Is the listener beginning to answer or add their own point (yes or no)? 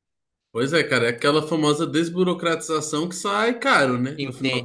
yes